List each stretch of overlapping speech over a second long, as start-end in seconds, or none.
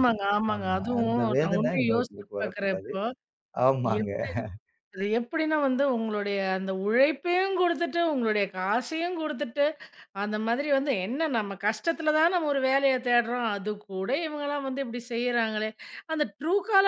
0.6-2.9